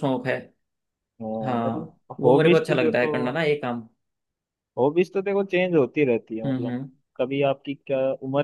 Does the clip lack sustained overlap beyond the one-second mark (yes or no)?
no